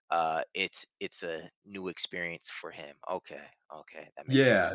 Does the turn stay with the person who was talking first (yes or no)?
no